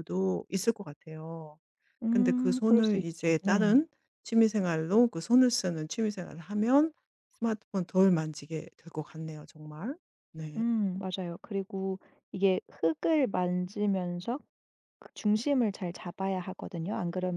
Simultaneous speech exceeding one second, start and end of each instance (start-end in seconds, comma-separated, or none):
2.1-3.8